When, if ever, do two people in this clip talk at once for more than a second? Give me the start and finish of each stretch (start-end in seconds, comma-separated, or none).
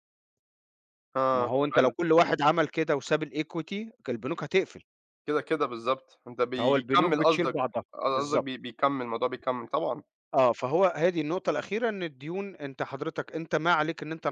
6.6-8.5